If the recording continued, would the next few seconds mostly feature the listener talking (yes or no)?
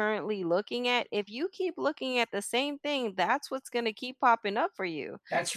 no